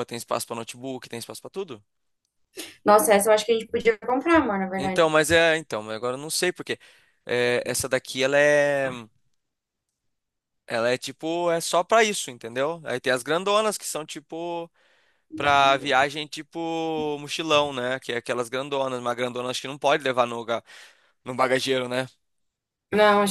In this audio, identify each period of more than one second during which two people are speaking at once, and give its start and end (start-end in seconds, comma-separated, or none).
none